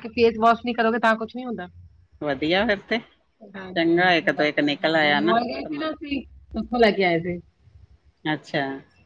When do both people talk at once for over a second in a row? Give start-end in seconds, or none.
3.7-5.9